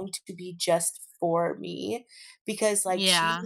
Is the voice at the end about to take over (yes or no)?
no